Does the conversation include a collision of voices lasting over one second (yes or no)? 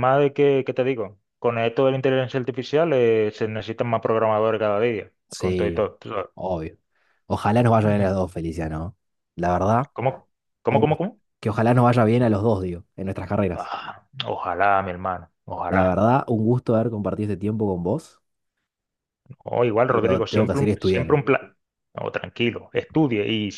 yes